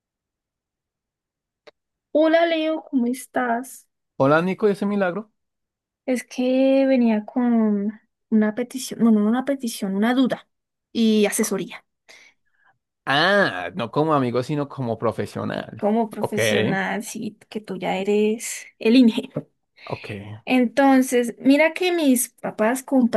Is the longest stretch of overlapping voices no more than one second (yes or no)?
yes